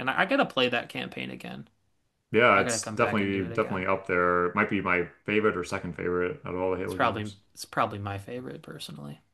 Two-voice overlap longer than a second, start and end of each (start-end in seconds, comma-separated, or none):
2.5-3.9